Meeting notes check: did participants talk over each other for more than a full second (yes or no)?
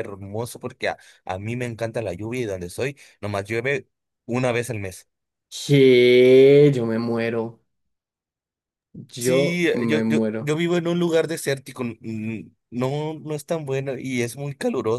yes